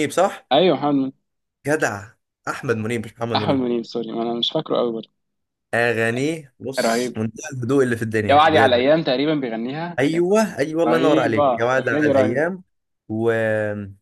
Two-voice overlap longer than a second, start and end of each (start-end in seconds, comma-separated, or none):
10.9-12.5